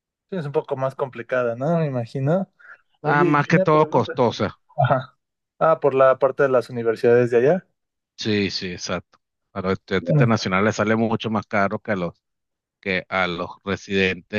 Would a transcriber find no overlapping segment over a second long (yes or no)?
no